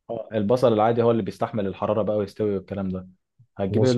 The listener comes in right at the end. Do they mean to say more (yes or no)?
no